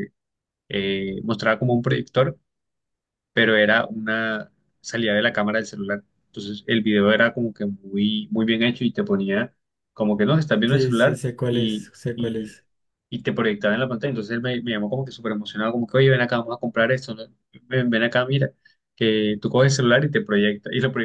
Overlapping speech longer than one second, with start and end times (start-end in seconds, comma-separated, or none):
10.6-12.5